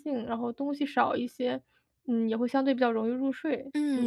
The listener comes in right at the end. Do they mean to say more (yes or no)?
yes